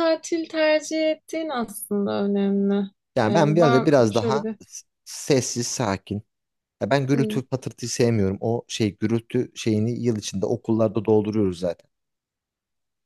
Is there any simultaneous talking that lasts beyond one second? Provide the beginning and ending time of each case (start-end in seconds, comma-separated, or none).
3.2-4.5